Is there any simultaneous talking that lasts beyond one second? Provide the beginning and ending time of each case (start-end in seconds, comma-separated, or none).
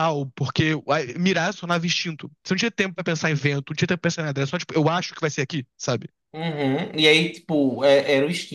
none